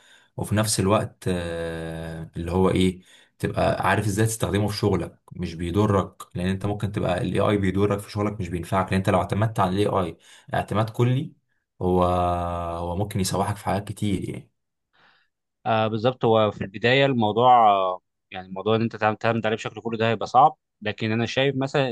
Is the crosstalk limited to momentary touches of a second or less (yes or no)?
yes